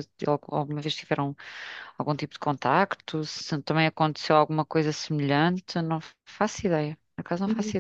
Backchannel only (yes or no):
no